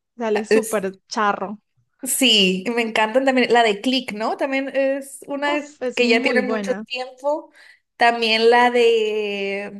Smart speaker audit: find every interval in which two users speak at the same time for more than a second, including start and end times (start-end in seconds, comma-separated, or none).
5.5-6.8